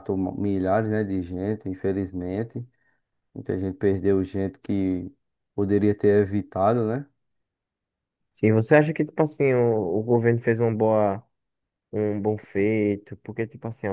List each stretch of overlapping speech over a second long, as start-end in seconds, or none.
none